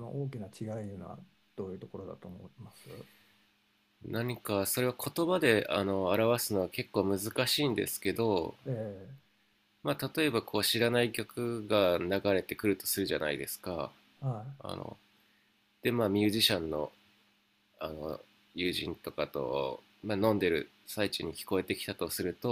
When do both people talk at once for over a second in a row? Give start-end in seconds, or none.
none